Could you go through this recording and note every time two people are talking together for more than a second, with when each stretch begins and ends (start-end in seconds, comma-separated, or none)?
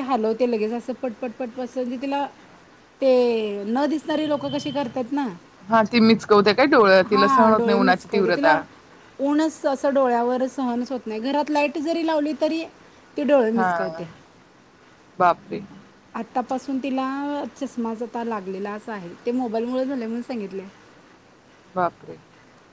7.1-8.6